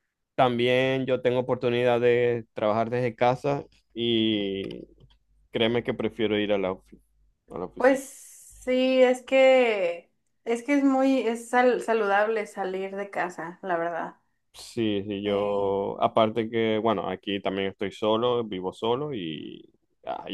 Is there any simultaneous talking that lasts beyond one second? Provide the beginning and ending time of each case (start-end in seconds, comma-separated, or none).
none